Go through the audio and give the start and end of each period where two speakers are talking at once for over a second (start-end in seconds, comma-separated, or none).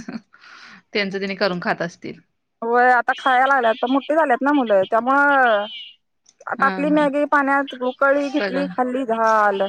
none